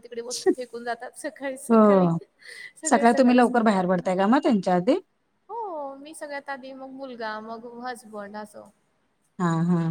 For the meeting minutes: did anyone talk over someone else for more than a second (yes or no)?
no